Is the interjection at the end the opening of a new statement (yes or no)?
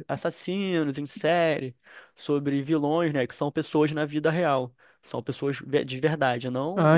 yes